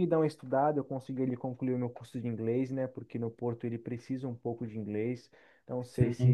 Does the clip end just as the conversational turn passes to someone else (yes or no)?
no